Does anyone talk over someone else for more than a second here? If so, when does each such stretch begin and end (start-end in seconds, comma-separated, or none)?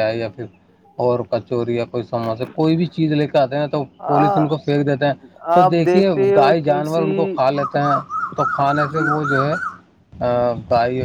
5.5-7.1